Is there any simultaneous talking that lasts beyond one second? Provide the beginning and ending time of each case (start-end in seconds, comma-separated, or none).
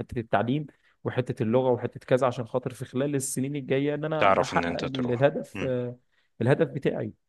4.2-5.7